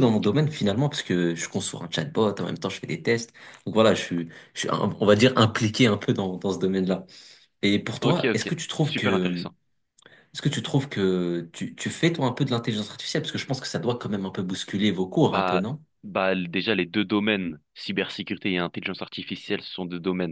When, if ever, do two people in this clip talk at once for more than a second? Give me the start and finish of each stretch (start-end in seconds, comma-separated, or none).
8.0-9.5